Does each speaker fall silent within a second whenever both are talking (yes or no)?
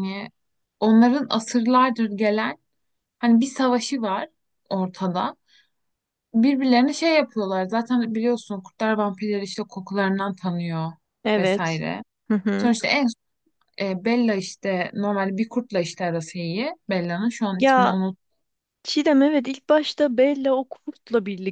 yes